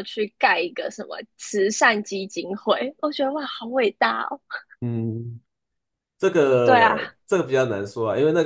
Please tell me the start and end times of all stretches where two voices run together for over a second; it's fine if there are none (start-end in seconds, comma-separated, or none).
none